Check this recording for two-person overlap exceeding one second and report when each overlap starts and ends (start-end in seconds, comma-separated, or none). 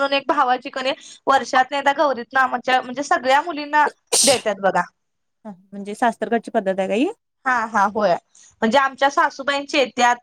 none